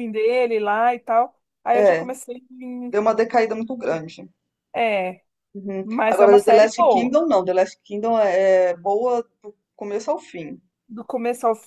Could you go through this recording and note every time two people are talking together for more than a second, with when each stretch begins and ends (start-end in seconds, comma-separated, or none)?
5.8-7.2